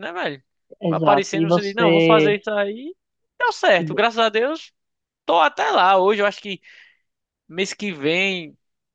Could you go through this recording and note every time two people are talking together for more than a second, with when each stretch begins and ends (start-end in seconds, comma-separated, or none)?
0.9-2.4